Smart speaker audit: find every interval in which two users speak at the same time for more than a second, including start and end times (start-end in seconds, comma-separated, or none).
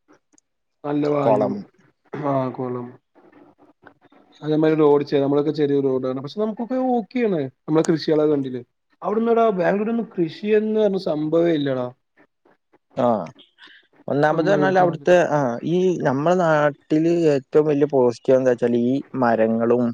none